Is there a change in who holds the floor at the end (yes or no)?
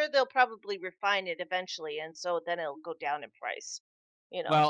yes